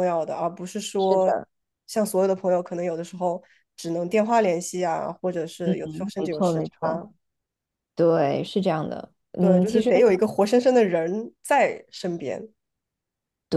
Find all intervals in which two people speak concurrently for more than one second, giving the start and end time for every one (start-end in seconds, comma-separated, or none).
5.6-7.0